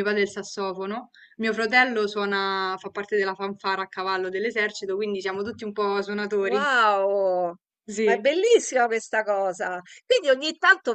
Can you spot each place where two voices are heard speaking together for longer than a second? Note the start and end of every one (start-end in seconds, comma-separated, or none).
none